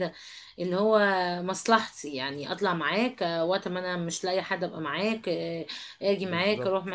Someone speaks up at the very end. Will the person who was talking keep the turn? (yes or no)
yes